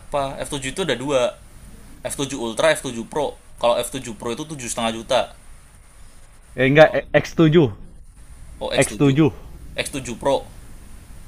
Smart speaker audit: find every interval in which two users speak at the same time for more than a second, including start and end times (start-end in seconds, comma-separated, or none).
none